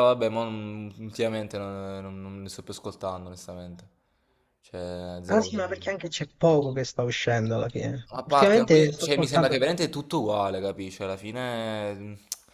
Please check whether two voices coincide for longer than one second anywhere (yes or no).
yes